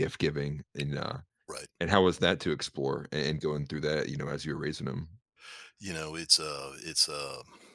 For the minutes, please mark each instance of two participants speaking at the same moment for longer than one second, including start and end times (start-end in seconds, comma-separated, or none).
none